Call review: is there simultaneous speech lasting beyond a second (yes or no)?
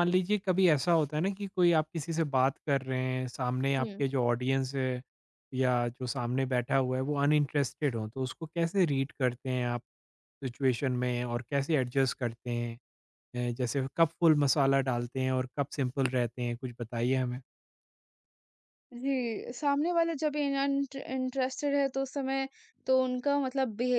no